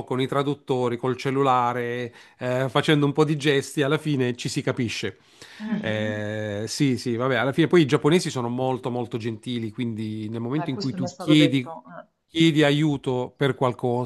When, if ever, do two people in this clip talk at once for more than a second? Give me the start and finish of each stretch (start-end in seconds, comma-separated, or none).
10.6-11.8